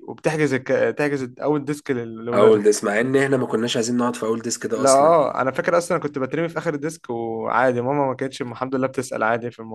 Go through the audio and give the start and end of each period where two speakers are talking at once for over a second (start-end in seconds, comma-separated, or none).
none